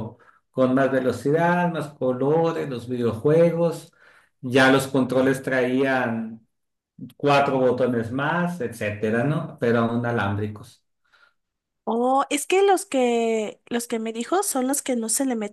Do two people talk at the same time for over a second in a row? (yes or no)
no